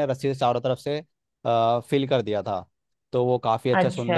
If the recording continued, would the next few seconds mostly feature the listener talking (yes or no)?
no